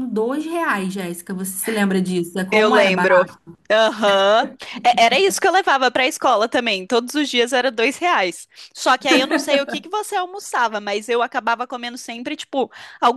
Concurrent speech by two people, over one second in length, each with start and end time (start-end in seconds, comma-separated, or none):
none